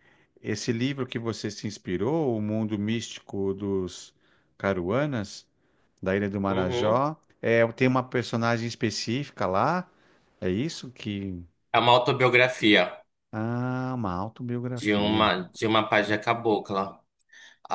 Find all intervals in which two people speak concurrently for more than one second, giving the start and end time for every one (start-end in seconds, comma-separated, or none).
none